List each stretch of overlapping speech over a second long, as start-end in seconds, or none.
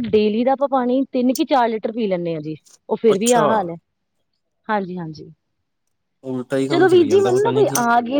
none